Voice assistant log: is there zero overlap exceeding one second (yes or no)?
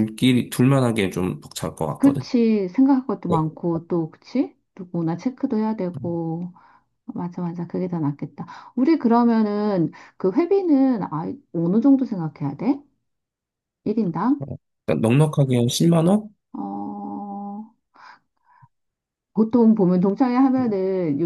yes